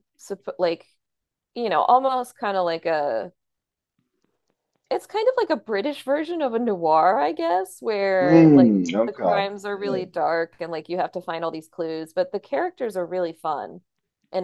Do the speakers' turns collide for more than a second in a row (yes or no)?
yes